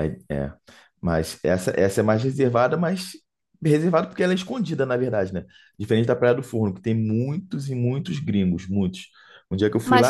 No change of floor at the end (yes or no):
no